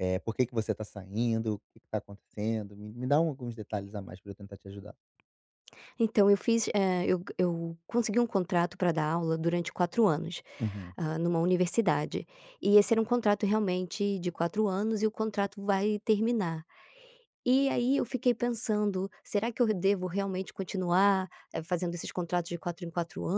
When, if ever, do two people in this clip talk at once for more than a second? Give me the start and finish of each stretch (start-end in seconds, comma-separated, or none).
none